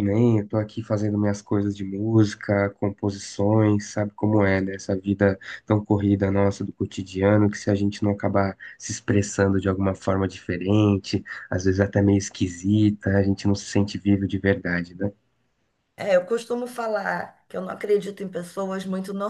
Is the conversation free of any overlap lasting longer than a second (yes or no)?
yes